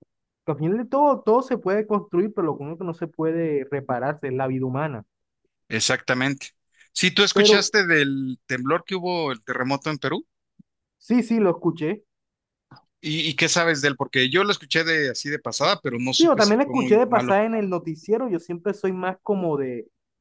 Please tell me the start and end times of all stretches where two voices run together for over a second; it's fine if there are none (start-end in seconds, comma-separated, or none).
16.2-17.4